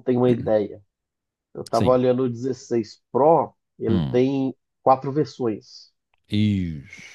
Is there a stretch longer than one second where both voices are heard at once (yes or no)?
no